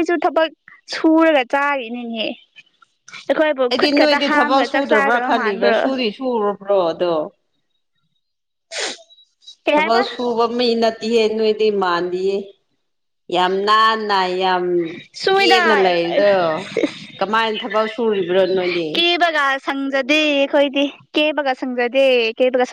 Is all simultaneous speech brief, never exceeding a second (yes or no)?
no